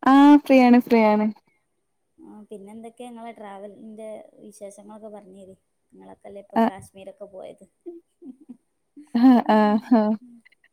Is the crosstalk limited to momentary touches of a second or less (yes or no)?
yes